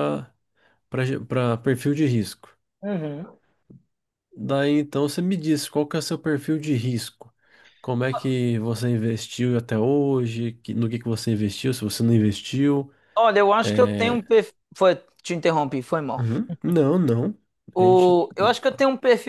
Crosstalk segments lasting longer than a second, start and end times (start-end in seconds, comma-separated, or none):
none